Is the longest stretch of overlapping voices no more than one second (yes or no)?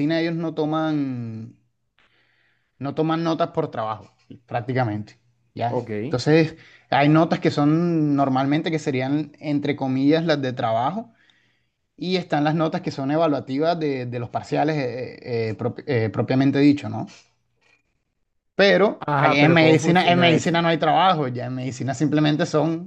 no